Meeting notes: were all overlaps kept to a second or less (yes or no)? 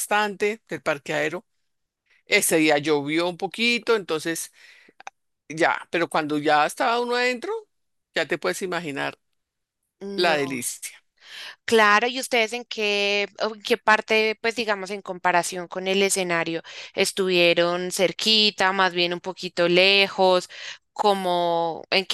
yes